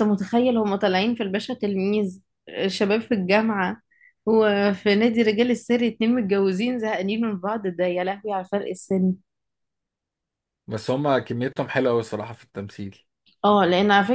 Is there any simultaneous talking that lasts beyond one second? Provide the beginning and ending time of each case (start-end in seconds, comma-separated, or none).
none